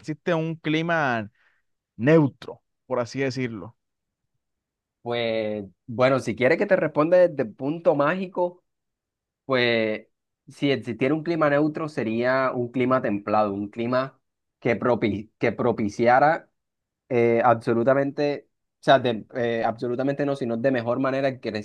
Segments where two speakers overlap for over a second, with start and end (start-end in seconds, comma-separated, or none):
none